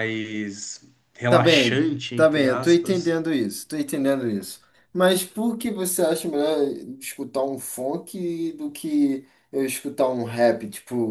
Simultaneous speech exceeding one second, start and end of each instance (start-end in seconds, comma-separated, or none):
1.3-3.1